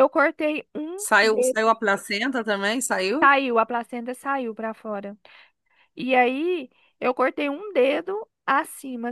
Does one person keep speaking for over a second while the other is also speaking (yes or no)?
no